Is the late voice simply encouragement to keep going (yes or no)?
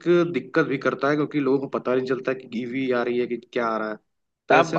no